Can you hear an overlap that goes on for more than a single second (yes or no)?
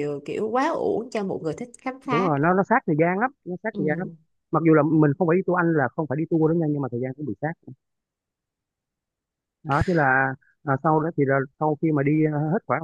no